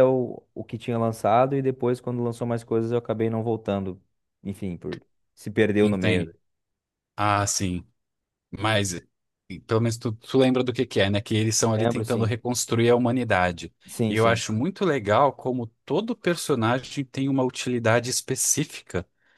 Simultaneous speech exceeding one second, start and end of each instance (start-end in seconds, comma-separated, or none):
none